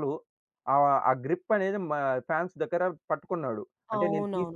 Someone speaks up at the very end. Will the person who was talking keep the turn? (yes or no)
no